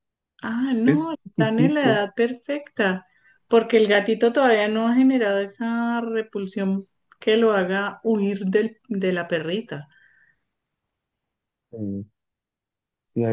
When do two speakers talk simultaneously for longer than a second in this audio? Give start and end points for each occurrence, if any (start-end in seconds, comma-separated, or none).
0.8-2.1